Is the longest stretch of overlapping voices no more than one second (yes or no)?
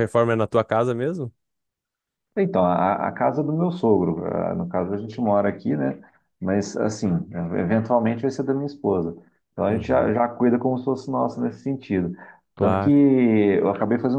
yes